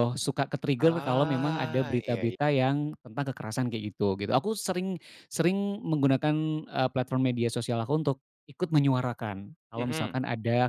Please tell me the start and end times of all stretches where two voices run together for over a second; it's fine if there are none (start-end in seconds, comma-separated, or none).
0.8-2.4